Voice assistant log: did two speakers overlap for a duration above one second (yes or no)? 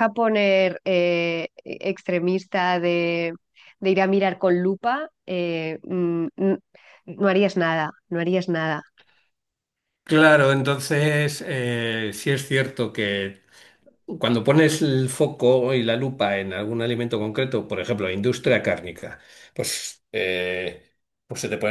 no